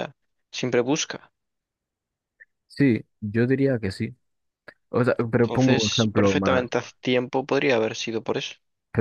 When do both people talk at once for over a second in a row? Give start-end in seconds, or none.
5.4-6.7